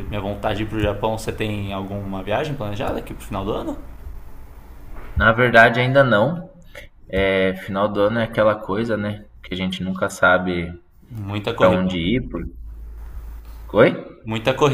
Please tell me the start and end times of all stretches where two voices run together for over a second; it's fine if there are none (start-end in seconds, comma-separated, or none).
none